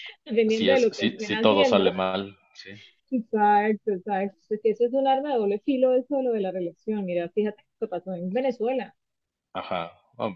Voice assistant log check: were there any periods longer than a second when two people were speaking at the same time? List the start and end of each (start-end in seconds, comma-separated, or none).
0.6-1.9